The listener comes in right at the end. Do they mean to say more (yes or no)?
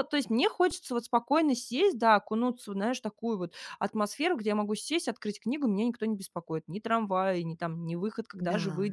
no